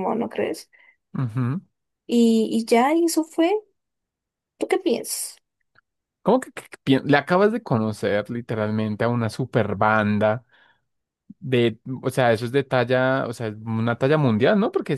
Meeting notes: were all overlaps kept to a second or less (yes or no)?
yes